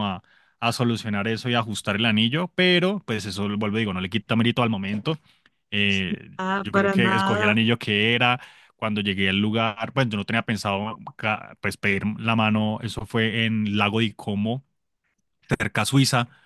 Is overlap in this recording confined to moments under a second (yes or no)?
no